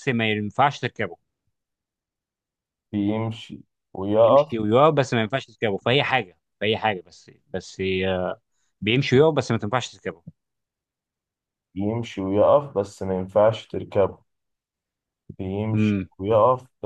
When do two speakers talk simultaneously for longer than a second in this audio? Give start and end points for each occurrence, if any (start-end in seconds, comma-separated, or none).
none